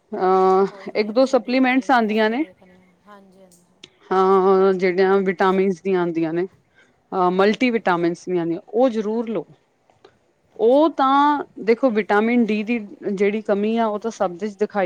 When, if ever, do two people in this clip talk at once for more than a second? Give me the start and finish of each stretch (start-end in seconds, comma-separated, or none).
0.7-2.4